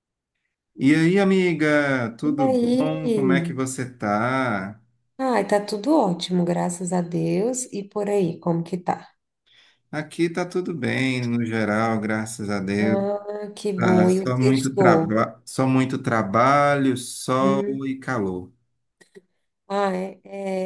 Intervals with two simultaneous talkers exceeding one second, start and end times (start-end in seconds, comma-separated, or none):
2.2-3.6, 13.8-15.2